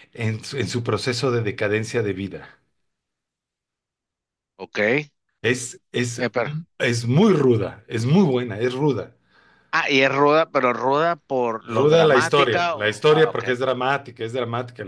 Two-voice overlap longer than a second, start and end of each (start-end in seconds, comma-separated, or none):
11.7-13.4